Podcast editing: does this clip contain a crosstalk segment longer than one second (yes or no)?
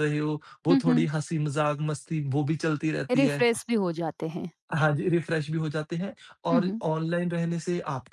no